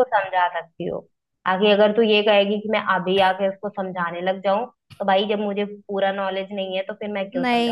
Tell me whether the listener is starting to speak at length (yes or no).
yes